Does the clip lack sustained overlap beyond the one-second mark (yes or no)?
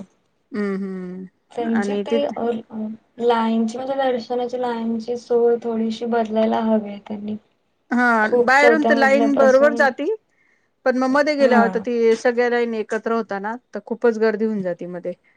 no